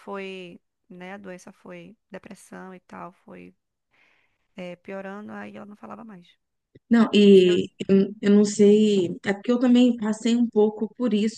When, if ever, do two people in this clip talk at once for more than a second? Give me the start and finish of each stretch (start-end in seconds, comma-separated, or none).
none